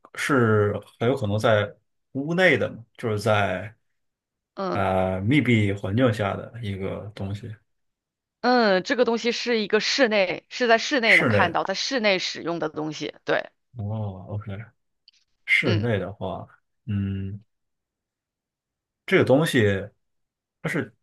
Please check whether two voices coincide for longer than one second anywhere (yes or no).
no